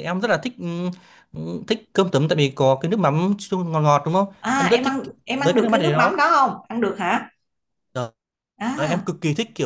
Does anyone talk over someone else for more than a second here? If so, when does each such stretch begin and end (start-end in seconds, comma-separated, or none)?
4.4-6.2